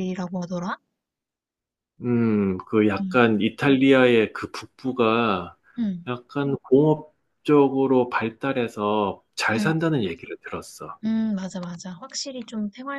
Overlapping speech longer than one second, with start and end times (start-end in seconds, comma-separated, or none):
none